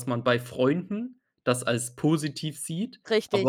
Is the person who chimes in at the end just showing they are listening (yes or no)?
yes